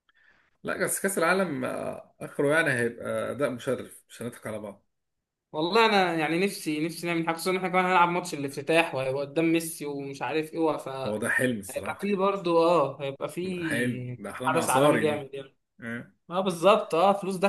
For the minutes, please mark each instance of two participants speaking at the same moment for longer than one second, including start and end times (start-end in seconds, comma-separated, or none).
13.4-15.3